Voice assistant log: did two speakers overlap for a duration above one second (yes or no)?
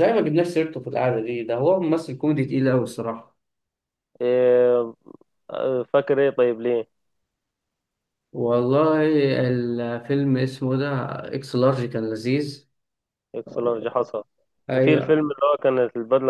no